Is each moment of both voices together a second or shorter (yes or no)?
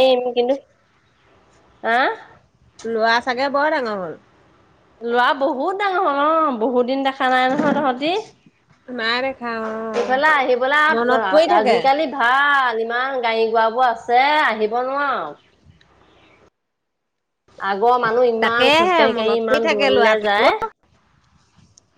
no